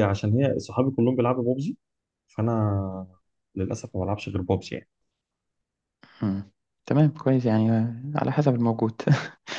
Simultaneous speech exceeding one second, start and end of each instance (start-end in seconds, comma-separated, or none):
none